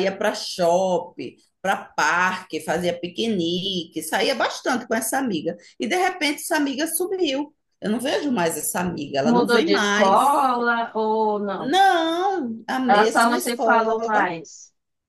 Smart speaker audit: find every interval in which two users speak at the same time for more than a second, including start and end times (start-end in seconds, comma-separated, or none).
9.2-10.4, 12.8-14.3